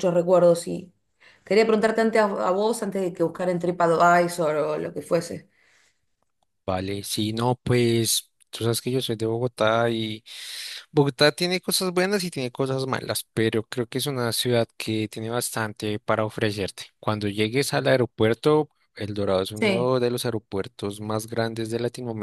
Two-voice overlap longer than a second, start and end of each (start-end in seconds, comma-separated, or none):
none